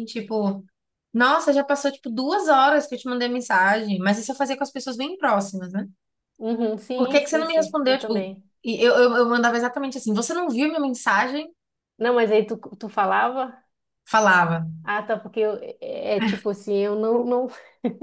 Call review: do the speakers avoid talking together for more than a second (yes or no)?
no